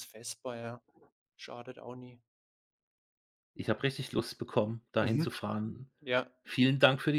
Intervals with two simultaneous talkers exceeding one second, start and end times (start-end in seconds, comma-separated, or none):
none